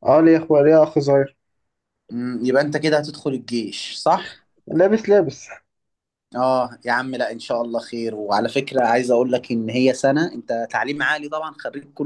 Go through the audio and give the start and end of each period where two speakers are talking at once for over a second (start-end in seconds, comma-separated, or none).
none